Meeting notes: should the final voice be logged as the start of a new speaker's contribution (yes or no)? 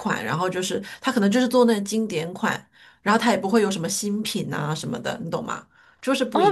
yes